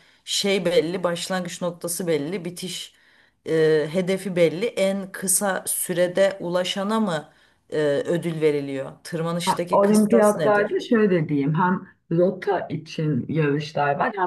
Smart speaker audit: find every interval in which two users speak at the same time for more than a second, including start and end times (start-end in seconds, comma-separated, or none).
9.4-10.8